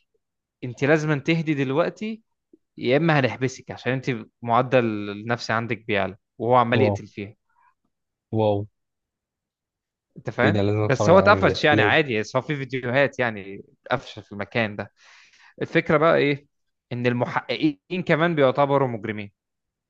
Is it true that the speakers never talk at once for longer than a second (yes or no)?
no